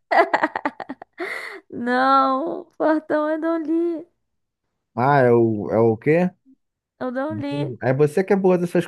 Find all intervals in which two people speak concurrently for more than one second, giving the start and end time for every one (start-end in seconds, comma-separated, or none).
none